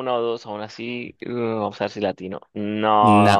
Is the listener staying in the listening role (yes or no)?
no